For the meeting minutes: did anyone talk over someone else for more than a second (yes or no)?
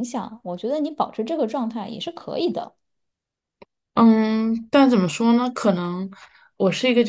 no